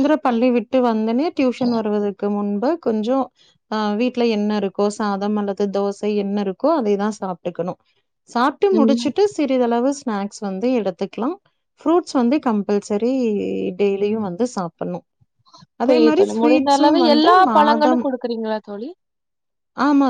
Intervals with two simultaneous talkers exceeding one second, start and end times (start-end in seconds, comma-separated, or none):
15.9-18.1